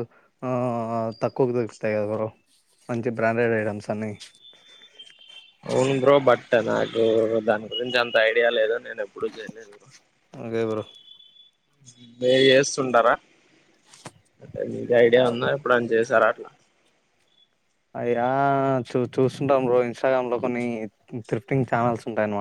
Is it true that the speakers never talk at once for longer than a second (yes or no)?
yes